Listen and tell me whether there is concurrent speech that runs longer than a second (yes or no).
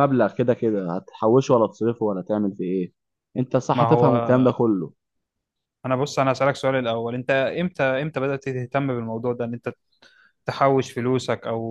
no